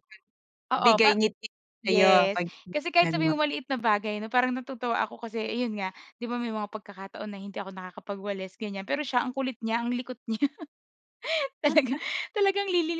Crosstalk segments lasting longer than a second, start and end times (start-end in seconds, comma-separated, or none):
1.9-3.4